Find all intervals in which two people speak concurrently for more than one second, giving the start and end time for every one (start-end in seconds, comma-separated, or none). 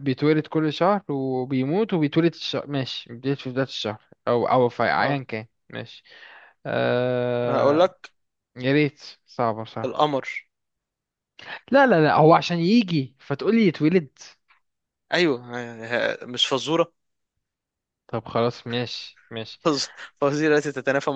none